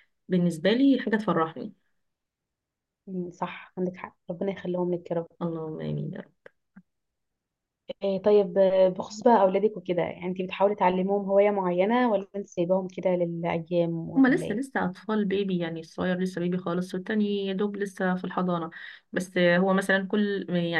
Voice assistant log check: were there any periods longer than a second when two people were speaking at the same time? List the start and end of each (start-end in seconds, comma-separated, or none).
none